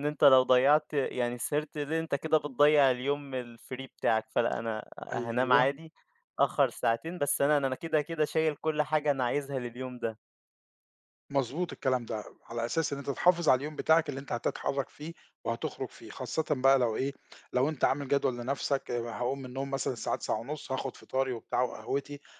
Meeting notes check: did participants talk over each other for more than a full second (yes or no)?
no